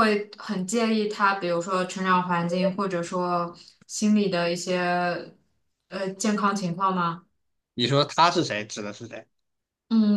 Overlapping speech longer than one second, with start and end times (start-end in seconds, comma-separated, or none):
none